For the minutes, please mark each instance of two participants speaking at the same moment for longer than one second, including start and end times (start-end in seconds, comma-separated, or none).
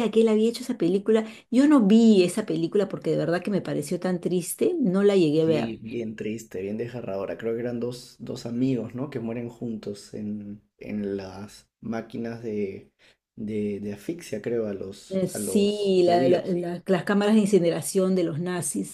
15.1-16.6